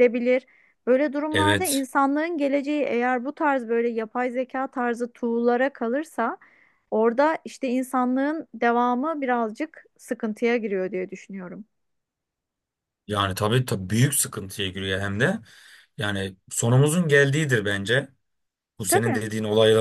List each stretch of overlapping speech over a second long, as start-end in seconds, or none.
none